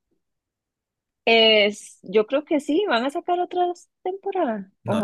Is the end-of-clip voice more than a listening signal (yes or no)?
yes